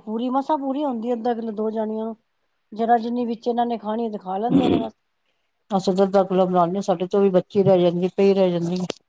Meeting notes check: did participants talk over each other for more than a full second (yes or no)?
no